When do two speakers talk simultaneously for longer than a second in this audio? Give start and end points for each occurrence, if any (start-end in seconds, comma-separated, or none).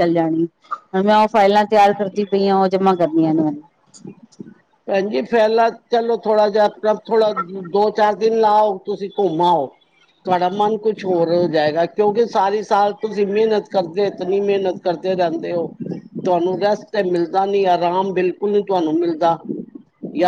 none